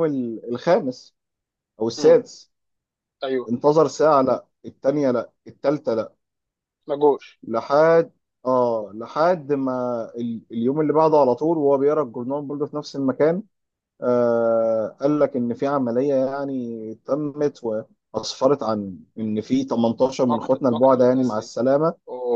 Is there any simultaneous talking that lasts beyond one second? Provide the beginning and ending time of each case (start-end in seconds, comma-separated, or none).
20.2-21.5